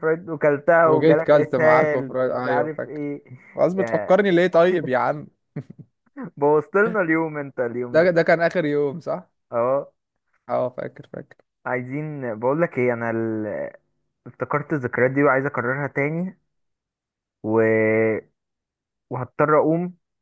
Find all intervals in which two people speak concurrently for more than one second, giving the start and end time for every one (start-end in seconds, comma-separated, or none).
0.8-3.0